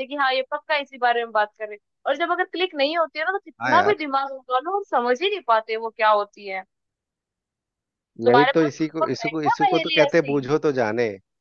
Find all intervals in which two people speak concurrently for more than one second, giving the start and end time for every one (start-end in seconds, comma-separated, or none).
8.3-10.3